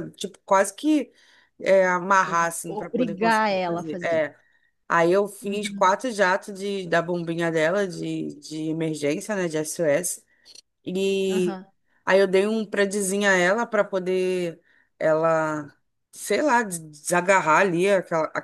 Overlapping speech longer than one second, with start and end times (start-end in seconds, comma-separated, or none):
2.3-4.2